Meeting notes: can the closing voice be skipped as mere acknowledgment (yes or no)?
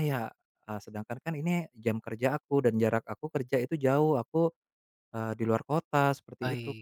no